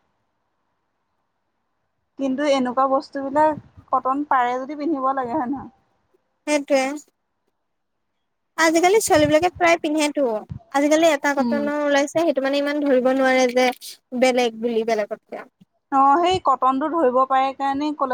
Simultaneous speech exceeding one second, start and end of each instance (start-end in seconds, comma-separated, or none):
none